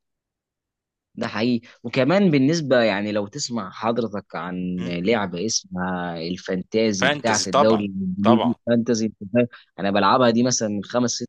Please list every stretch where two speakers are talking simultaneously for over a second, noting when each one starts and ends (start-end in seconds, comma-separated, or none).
7.0-8.6